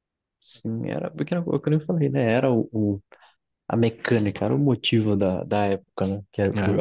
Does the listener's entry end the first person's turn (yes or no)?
no